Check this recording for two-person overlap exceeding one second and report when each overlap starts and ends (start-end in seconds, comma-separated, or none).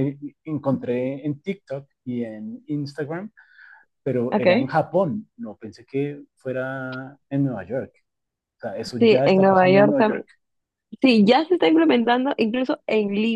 9.0-10.2